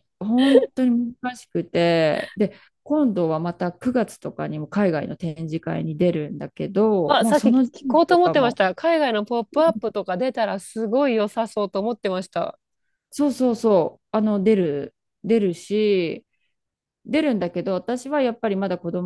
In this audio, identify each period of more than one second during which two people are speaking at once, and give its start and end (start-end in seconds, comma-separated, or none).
7.1-8.6